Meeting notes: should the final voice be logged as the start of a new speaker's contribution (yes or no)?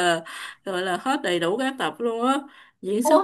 no